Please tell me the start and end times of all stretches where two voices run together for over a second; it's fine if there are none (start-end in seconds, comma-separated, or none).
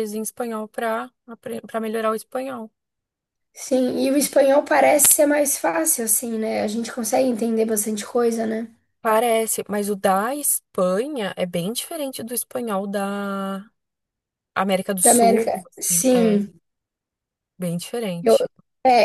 15.0-16.4